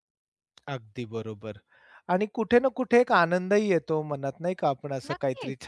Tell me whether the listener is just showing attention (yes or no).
yes